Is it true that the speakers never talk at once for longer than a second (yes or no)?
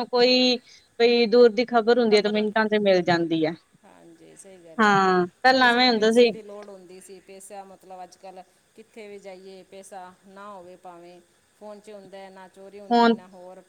yes